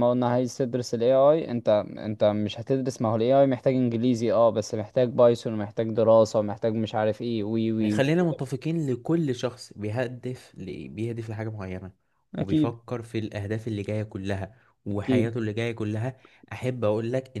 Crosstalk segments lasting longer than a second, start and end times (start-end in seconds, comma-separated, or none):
none